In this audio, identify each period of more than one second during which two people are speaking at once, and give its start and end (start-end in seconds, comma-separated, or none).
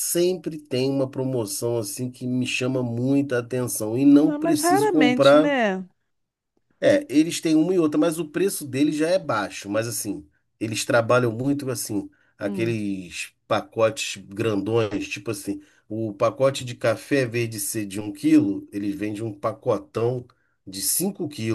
4.2-5.5